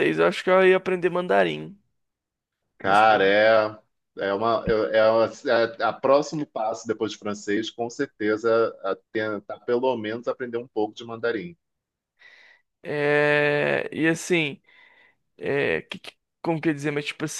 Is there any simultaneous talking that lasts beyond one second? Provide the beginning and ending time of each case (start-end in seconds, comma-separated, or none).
none